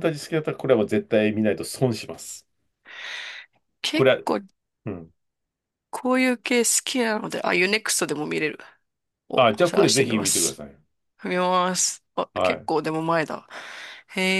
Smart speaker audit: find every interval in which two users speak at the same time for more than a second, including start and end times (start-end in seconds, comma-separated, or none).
9.3-10.6